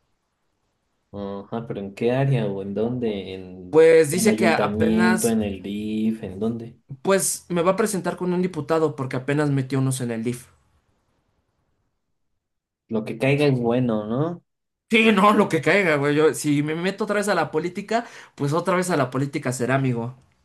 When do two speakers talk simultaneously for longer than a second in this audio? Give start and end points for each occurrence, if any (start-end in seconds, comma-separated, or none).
3.7-5.4